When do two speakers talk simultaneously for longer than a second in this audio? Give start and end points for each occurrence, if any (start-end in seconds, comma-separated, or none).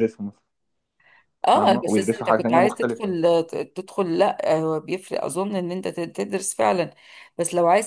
1.5-3.1